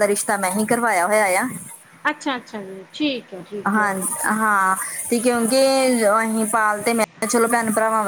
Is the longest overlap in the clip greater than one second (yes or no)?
no